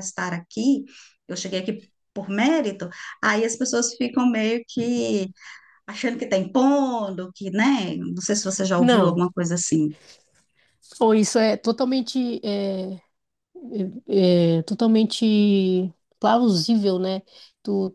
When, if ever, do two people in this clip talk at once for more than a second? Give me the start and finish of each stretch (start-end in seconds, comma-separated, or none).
none